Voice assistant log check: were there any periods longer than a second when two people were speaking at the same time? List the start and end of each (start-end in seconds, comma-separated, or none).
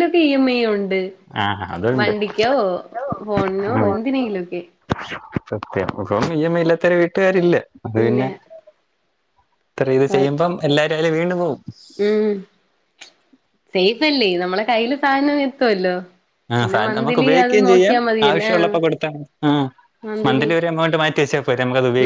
16.6-18.7